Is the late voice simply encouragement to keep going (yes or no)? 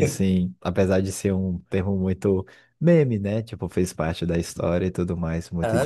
no